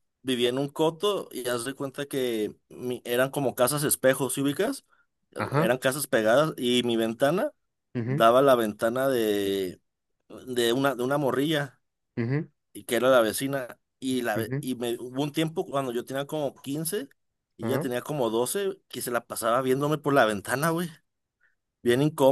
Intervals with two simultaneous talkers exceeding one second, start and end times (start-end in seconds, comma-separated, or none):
none